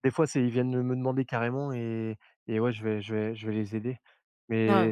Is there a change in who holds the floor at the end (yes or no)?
no